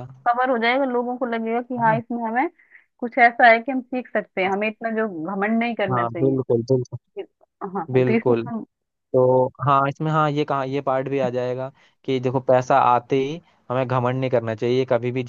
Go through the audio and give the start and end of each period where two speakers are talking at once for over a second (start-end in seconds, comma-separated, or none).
none